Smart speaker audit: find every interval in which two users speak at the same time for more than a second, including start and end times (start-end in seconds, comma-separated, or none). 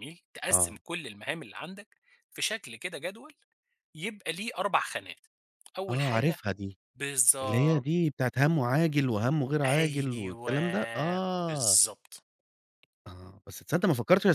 9.7-11.8